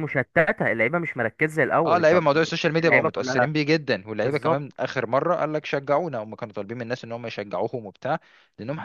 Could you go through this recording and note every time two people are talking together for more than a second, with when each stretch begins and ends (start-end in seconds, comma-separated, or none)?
1.9-3.5